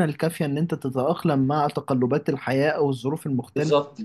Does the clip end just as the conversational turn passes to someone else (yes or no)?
no